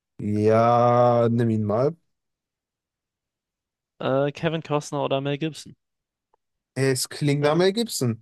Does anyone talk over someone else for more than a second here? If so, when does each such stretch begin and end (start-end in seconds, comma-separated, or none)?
none